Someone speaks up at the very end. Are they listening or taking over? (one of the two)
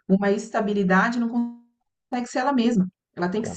listening